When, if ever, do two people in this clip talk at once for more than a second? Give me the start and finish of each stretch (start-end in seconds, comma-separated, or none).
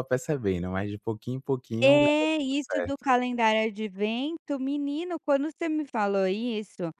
1.8-3.0